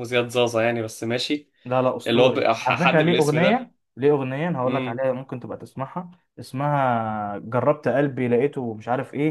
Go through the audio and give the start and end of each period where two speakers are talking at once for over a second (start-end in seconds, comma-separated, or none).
2.1-3.7